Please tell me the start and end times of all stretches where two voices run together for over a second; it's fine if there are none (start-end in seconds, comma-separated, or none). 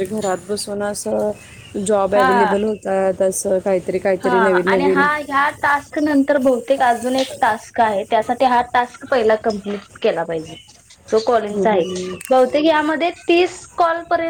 none